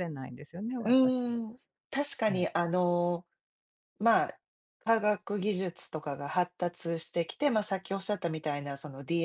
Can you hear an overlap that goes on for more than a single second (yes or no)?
no